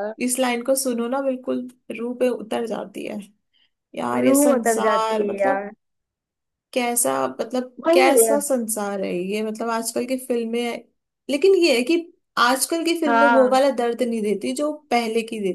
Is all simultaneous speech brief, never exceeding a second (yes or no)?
no